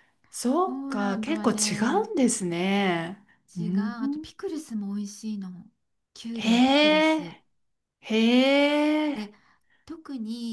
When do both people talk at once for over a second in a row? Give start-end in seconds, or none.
0.6-2.1